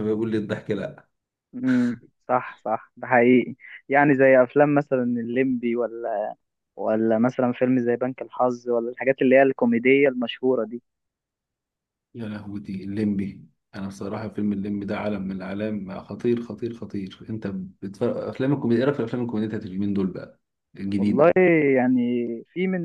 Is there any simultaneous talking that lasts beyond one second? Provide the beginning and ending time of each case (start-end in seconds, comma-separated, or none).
none